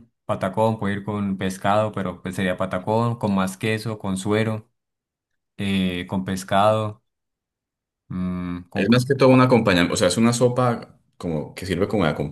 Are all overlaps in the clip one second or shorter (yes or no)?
yes